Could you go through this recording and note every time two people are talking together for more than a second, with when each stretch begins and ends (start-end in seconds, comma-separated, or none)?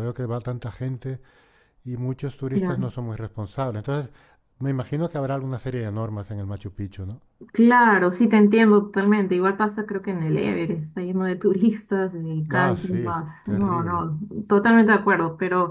12.5-14.0